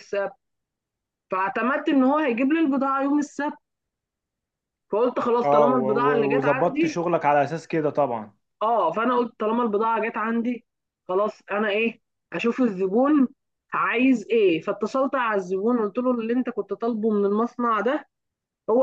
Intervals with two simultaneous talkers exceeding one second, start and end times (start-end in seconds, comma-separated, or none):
5.4-7.0